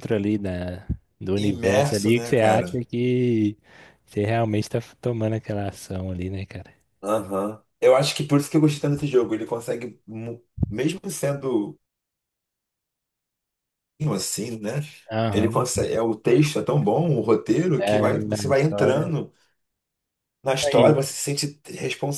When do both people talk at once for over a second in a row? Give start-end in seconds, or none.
1.4-2.8, 17.8-19.1